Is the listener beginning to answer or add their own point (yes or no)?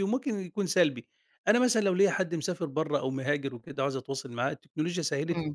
no